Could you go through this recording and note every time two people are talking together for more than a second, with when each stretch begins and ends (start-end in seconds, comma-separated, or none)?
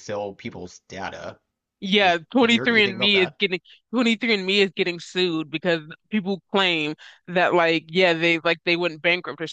2.0-3.4